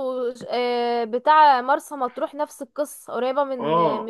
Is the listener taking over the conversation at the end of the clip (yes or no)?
yes